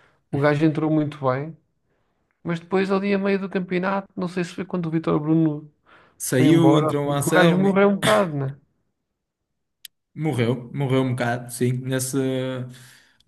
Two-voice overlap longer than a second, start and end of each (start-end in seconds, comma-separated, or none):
6.3-7.8